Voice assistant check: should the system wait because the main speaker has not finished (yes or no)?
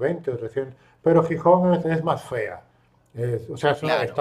yes